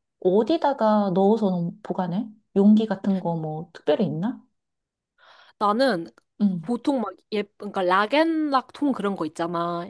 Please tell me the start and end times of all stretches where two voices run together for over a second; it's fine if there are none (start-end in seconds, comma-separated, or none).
none